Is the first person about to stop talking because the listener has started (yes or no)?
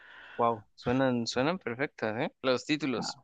yes